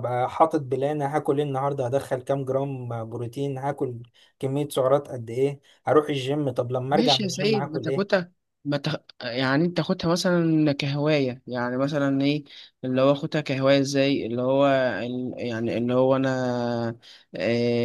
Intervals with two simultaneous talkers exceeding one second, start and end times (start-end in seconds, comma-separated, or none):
6.9-8.2